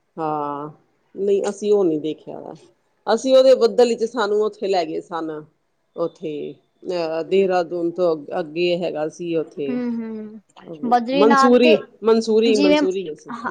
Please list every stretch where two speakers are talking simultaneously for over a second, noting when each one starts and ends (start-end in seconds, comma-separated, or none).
none